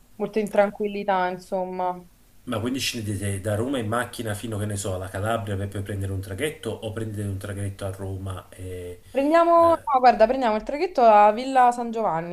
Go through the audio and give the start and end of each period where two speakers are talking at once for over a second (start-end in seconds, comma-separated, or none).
none